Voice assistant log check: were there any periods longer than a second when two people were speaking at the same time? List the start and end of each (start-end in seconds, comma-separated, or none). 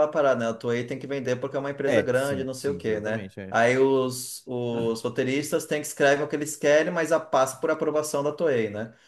1.9-3.6